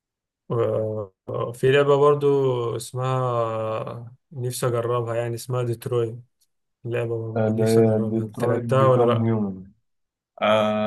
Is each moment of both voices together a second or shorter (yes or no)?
no